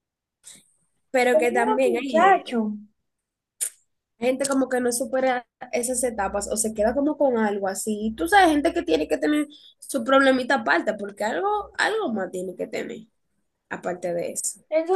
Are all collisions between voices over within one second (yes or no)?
no